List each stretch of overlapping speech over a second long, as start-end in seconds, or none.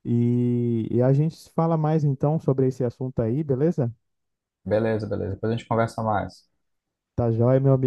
none